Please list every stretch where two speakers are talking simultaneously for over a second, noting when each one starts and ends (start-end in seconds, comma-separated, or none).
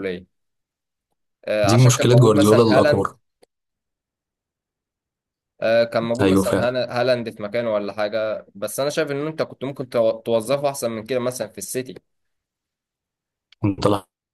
1.7-3.1